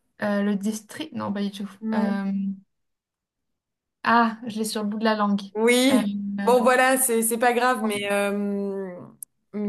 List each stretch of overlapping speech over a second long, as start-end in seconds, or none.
none